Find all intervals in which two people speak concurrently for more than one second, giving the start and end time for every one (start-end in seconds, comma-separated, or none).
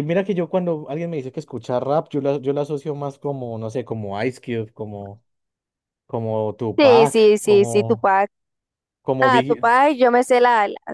6.8-8.1